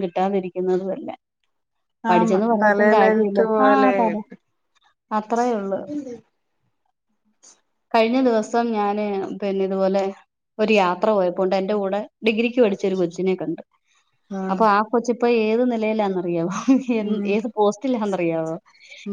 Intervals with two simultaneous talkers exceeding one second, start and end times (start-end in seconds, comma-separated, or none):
2.1-3.9